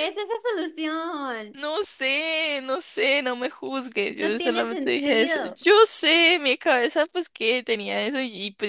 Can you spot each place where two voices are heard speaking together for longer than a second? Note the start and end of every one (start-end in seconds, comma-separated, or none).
4.2-5.6